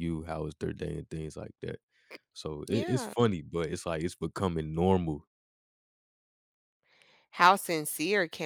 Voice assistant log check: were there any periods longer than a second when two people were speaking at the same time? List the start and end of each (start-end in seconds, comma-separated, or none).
none